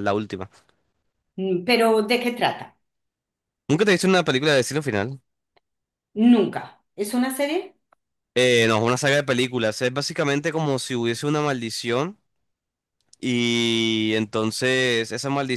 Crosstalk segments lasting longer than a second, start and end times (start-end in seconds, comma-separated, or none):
none